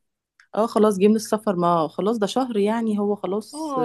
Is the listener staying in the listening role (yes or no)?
no